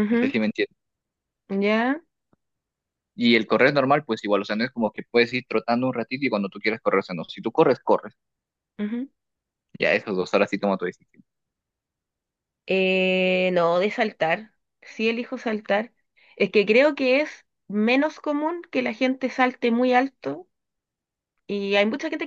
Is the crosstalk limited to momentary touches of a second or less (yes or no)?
yes